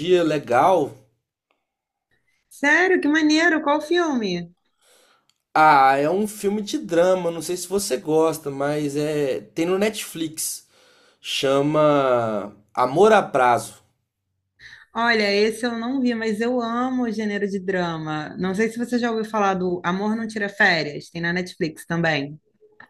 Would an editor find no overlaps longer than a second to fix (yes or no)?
yes